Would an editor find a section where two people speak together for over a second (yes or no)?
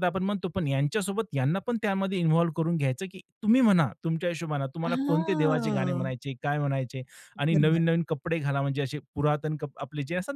yes